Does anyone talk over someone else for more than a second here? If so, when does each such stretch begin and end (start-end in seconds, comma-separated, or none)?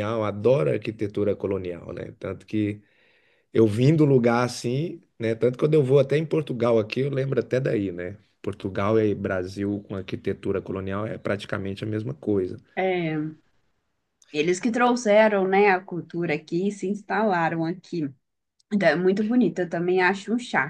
none